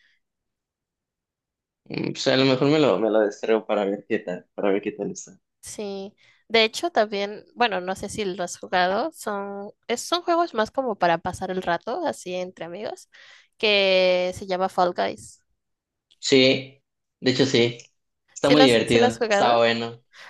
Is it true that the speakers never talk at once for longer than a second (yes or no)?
no